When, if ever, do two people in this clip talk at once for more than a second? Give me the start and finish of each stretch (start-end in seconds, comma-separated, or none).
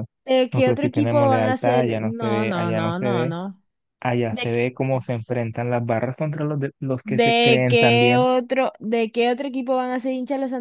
0.5-3.3, 7.0-8.3